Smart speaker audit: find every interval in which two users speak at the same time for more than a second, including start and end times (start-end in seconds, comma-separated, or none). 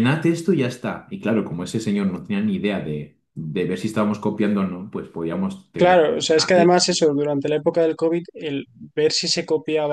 none